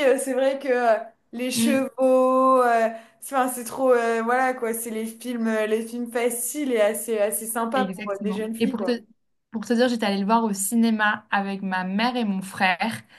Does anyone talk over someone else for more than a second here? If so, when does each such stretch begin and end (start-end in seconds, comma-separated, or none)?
7.7-9.0